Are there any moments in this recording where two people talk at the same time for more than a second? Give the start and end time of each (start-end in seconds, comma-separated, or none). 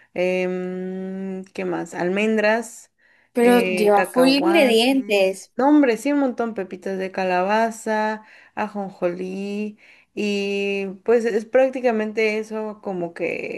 3.4-5.5